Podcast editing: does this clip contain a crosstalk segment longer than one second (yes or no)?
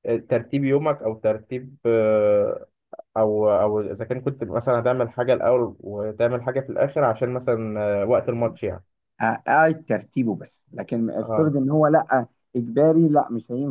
no